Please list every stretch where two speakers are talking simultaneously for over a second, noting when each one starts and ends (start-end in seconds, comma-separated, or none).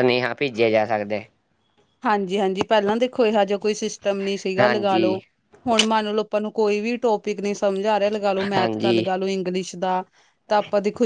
none